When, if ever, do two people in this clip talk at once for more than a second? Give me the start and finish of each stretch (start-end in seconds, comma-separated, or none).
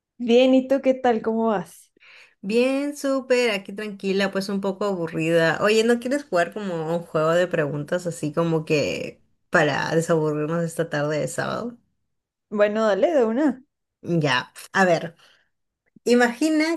none